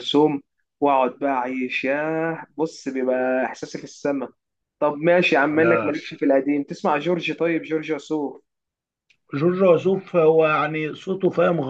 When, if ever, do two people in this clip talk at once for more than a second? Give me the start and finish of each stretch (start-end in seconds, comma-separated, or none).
none